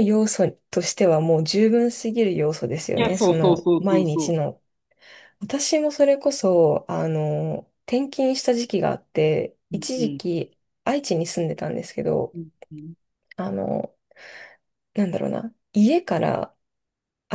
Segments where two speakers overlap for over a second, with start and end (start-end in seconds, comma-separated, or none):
3.0-4.3